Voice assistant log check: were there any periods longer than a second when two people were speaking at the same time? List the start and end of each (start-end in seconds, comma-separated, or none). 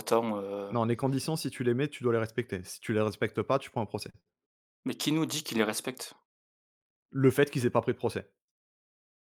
none